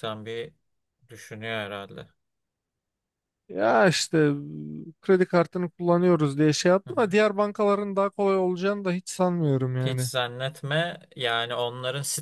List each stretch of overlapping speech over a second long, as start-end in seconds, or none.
none